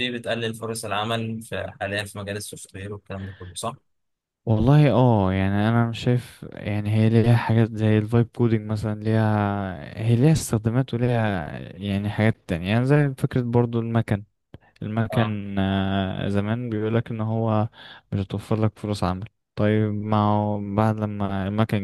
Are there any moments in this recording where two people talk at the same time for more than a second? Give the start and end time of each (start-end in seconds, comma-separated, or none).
none